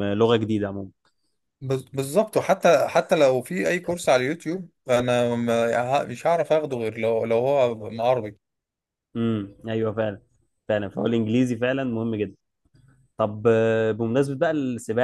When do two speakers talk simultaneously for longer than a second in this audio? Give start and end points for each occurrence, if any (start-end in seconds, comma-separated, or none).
none